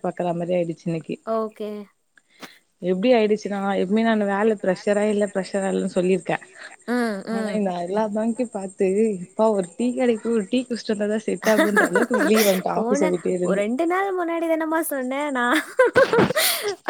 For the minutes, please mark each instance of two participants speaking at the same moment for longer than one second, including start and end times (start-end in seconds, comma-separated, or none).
none